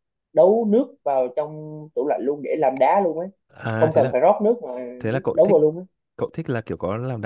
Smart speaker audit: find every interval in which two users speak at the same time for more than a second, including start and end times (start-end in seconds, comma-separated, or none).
none